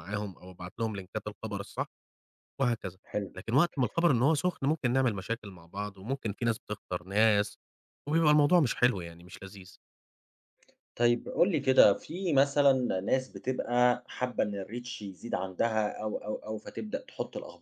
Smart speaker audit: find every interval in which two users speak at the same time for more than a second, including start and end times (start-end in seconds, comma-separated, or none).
none